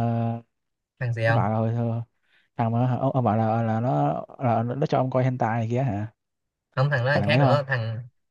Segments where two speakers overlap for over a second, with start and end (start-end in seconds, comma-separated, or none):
none